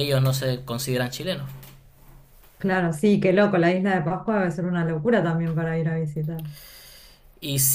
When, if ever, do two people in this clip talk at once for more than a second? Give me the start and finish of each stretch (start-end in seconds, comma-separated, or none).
none